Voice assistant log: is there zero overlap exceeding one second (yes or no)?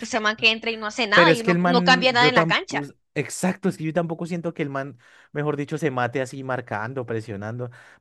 no